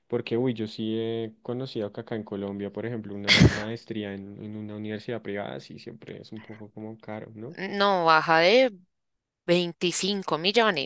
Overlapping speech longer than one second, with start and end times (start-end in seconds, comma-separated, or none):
none